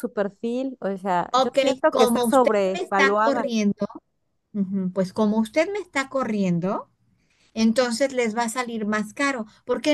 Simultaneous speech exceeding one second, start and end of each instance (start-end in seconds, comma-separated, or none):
1.3-3.5